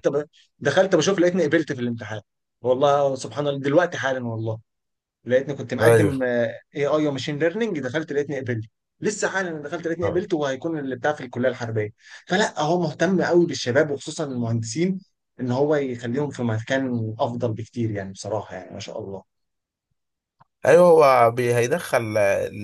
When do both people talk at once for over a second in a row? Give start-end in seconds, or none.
none